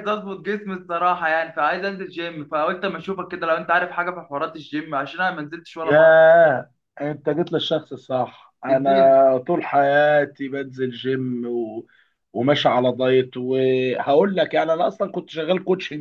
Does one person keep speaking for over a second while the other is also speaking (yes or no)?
no